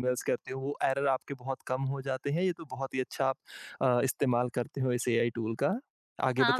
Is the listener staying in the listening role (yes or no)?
no